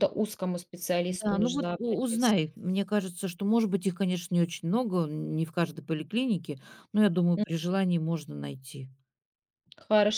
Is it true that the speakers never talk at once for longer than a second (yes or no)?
no